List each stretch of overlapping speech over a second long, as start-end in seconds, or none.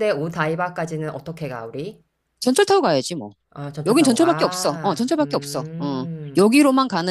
3.9-6.5